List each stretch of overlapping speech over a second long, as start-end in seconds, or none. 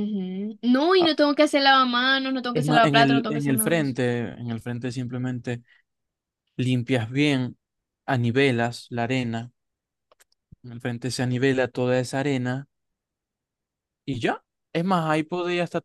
2.5-3.9